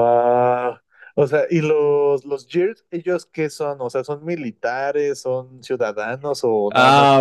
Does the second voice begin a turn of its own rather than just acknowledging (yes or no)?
yes